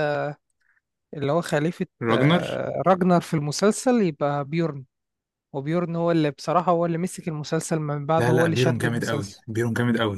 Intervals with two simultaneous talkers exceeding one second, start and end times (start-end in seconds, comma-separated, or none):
8.2-9.4